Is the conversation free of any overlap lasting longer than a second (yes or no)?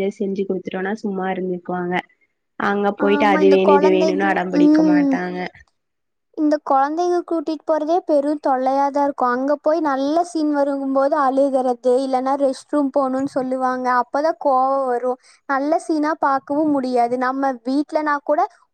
no